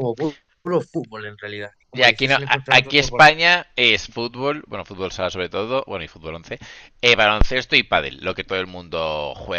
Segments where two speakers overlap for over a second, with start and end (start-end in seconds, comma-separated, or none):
1.9-3.3